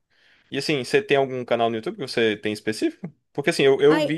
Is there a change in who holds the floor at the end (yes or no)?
no